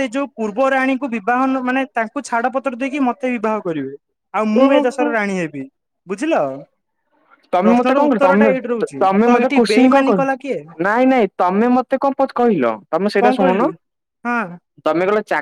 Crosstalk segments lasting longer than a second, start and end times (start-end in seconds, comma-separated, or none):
7.6-10.6